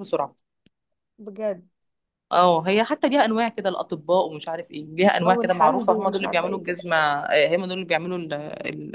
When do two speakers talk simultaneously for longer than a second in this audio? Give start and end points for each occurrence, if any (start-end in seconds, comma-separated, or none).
5.2-6.8